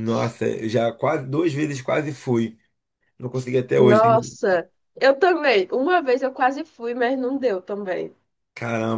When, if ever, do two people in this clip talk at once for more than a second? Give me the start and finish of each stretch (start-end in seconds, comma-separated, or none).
none